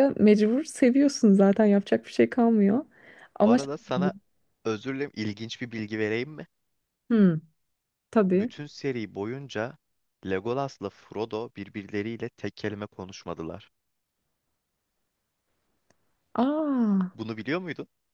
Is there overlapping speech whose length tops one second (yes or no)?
no